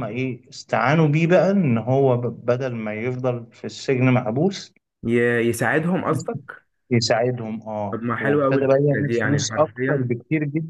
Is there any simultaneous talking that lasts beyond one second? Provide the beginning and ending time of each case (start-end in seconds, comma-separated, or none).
7.9-10.2